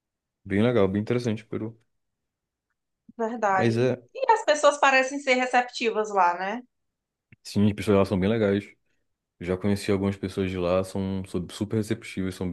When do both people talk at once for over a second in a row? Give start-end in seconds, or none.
none